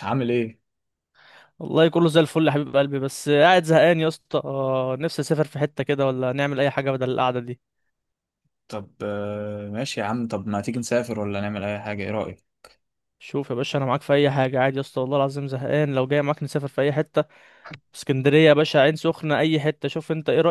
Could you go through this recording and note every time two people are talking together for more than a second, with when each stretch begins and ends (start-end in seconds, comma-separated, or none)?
none